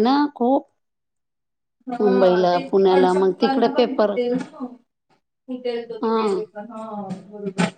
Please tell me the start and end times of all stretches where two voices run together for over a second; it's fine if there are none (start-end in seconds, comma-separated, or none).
2.0-4.1